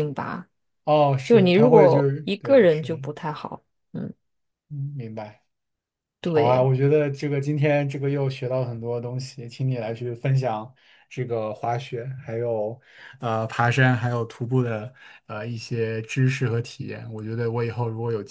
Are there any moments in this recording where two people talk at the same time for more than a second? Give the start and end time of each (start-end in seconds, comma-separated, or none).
1.2-3.0